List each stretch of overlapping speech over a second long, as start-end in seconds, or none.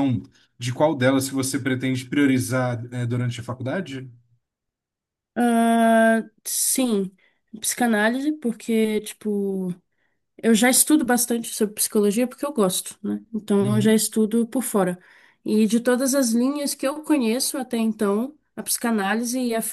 none